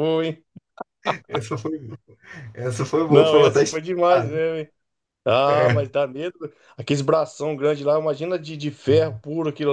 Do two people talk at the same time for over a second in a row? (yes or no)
yes